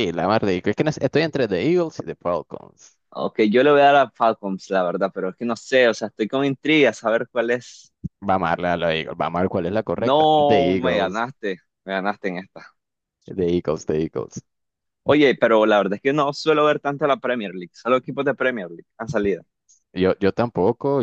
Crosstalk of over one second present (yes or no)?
yes